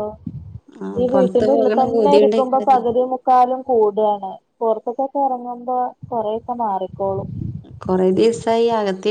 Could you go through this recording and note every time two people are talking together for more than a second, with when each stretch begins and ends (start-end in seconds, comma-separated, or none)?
1.0-2.8